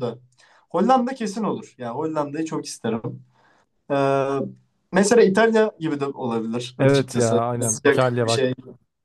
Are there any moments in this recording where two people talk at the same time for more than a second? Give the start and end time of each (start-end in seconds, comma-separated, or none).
6.8-8.5